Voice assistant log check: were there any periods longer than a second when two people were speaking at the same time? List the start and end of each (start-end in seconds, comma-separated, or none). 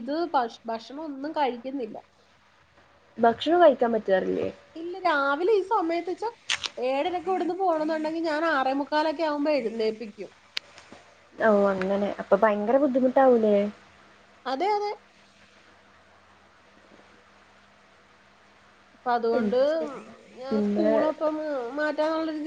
none